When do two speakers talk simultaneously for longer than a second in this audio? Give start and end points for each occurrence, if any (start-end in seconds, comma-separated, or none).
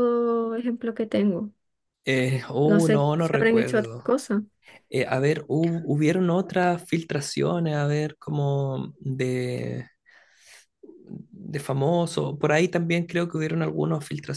2.6-4.1